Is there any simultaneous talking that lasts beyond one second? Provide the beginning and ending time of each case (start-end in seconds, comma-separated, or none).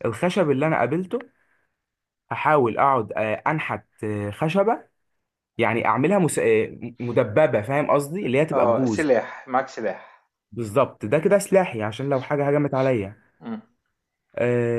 none